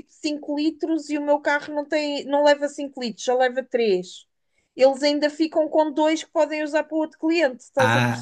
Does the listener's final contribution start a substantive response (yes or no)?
yes